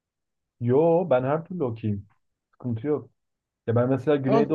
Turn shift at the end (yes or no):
no